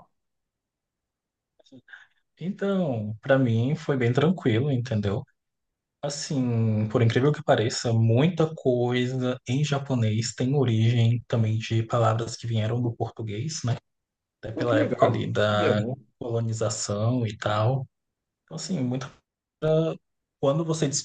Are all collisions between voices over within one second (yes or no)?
no